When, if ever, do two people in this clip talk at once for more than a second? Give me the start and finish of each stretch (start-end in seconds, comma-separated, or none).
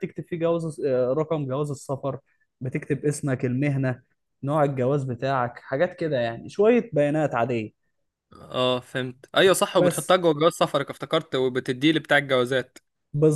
none